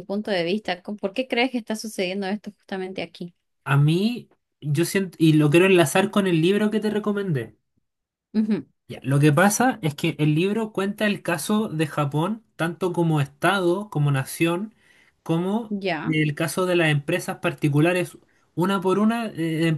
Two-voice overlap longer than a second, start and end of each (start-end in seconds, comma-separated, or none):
none